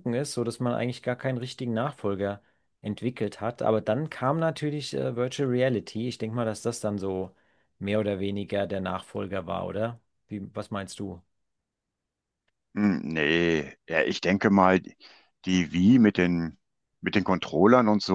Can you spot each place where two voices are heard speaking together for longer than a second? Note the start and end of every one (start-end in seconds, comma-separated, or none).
none